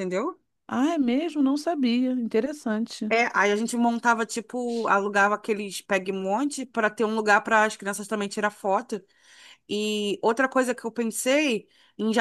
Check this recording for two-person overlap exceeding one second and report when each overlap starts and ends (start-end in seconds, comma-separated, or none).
none